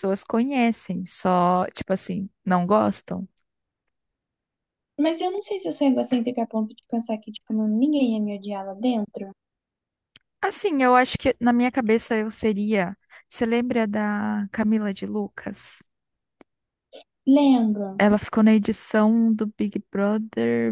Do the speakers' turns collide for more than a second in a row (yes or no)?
no